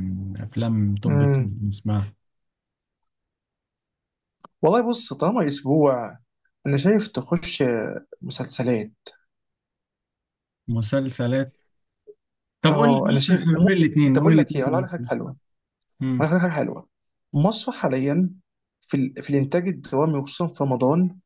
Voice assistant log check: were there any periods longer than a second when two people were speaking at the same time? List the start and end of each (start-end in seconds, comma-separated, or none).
12.7-14.9